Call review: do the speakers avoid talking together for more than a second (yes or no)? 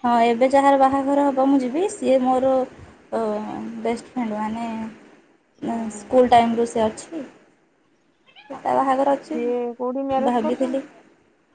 no